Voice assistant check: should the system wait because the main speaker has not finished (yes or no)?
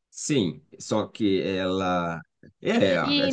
no